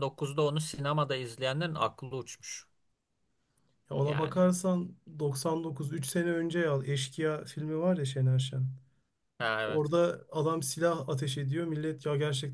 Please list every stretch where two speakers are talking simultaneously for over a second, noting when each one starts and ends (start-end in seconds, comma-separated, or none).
none